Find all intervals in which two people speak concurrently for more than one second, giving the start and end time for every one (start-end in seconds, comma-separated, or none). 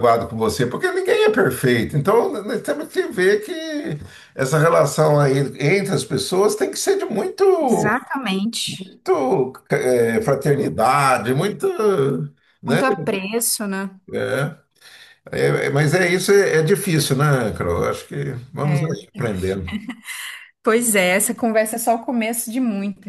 none